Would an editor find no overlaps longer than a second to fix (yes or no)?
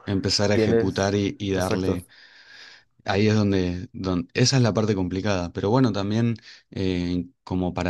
no